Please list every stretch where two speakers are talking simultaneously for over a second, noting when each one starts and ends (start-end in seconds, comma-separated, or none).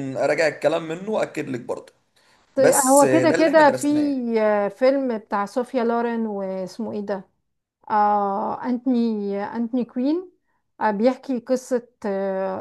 2.6-3.9